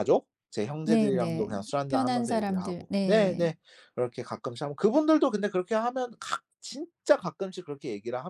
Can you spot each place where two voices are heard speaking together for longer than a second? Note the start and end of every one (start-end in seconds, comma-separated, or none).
0.8-3.5